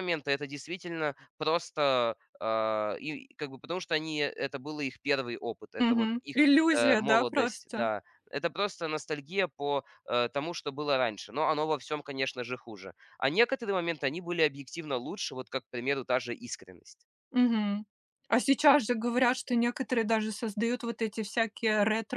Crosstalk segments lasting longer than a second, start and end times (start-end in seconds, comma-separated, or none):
5.8-7.9